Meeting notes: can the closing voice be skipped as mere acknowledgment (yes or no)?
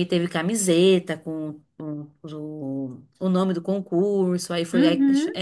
yes